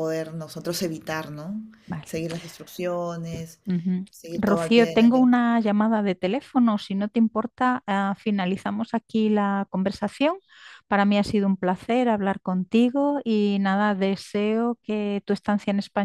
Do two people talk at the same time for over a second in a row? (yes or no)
yes